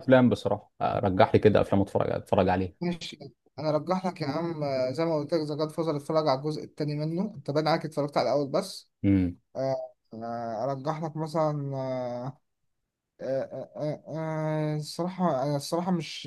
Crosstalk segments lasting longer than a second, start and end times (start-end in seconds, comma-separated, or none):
none